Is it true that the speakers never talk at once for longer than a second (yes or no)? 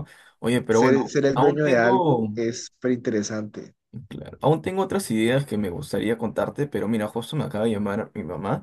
no